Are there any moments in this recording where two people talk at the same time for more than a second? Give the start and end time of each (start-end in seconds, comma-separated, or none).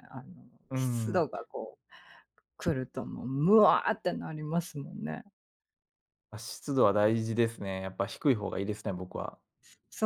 none